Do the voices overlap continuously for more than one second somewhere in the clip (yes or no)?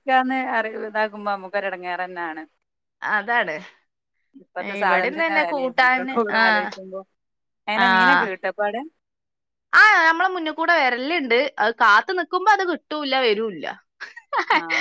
yes